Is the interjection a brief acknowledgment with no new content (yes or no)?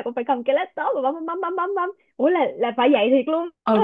no